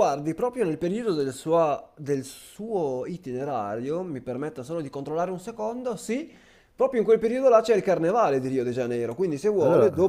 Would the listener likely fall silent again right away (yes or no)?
yes